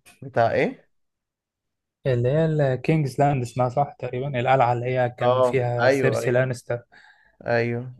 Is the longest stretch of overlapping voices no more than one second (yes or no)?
no